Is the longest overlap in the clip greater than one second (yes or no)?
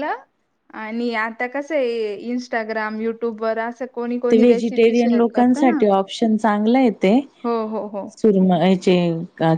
yes